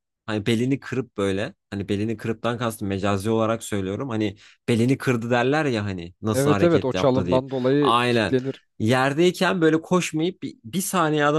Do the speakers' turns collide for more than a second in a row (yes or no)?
yes